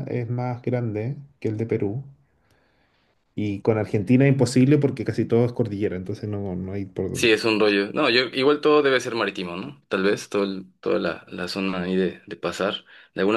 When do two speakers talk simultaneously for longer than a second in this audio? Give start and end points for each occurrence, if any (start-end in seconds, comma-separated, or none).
none